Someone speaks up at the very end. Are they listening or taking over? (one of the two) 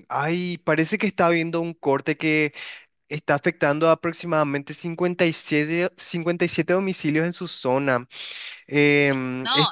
taking over